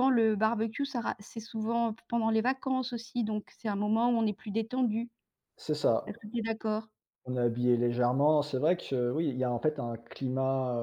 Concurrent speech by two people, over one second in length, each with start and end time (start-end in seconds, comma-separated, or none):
none